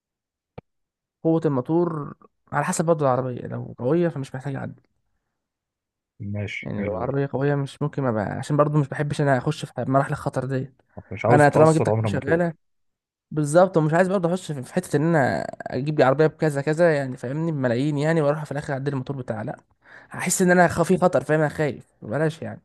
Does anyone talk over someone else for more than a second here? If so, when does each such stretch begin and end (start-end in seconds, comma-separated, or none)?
11.3-12.5